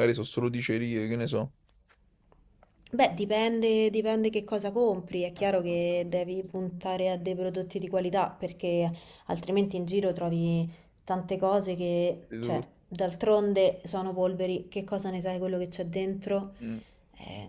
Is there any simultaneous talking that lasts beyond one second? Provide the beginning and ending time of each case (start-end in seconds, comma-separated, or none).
none